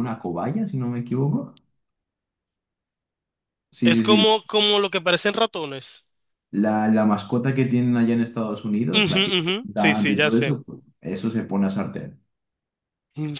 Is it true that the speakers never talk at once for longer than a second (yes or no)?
no